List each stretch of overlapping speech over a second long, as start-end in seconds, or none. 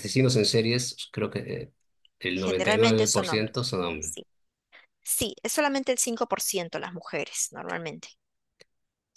2.3-4.1